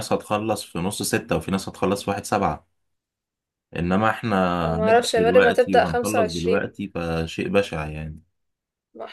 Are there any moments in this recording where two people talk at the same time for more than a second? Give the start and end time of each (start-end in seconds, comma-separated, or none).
4.8-6.7